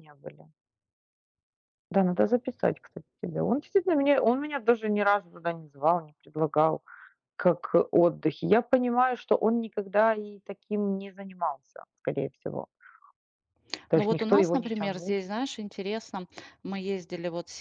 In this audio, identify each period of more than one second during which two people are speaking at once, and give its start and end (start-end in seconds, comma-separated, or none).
13.9-15.2